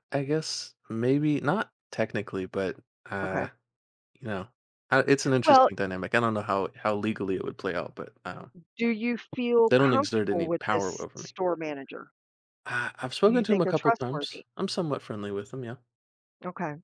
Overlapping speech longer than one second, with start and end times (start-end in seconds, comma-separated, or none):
9.7-11.3, 13.2-14.4